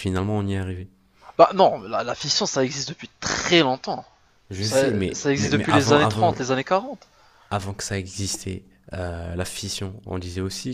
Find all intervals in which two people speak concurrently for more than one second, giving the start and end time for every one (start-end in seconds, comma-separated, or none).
4.6-6.3